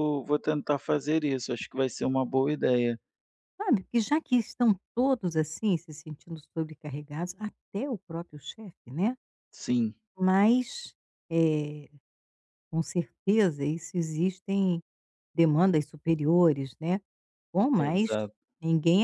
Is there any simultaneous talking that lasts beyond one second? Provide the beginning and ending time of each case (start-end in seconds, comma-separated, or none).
none